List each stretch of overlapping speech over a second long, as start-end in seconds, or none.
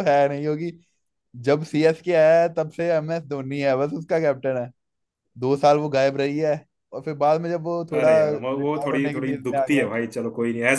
8.0-9.9